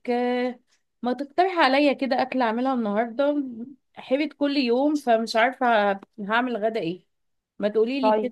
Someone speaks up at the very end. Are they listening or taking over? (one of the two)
listening